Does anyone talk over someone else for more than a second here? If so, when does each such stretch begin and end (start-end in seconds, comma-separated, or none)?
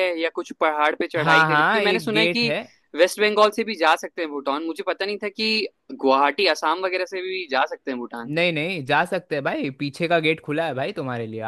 1.2-2.5